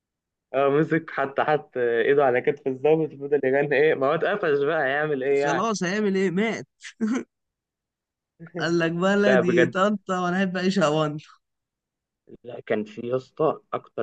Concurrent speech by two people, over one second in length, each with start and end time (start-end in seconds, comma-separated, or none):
none